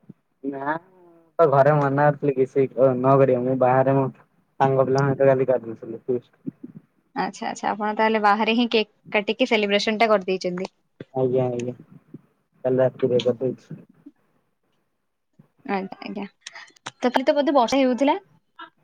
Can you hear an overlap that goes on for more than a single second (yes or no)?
no